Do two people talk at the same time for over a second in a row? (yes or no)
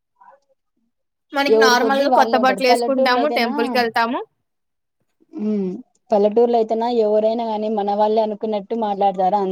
yes